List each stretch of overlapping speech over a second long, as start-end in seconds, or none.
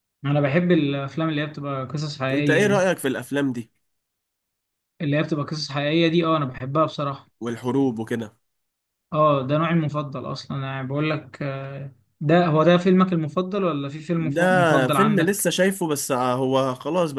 14.2-15.5